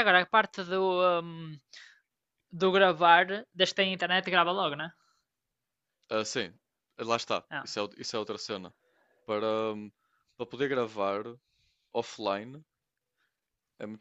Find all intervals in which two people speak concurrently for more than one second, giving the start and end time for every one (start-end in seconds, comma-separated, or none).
none